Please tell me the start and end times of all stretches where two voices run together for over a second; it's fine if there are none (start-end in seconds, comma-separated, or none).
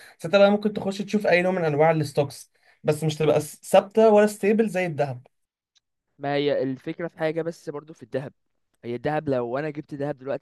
none